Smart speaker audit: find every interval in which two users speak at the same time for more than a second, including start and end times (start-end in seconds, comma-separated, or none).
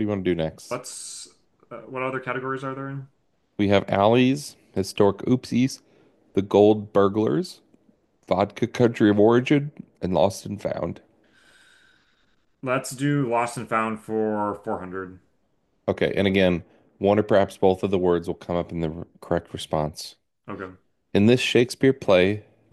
none